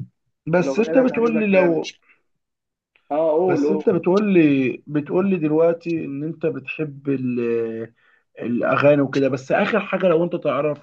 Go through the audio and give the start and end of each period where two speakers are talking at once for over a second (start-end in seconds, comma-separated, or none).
0.6-1.8